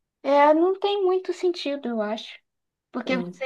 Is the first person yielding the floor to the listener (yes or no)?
no